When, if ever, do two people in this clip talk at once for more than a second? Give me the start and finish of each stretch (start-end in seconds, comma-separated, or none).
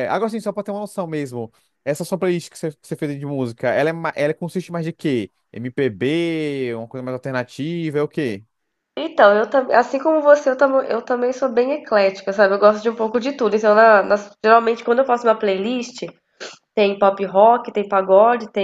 none